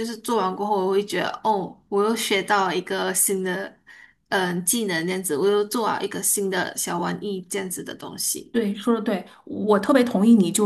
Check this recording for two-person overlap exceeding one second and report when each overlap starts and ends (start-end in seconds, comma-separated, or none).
none